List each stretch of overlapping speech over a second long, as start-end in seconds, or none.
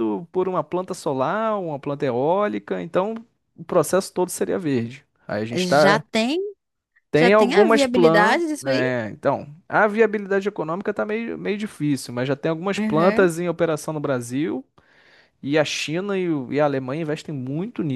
7.2-8.9